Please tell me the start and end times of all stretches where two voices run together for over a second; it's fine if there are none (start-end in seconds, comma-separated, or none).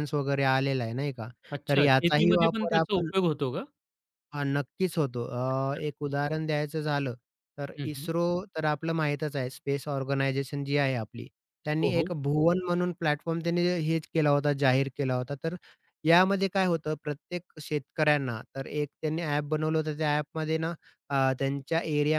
1.7-3.1